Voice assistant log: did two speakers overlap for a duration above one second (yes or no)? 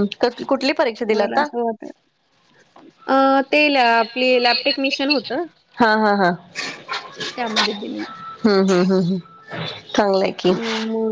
no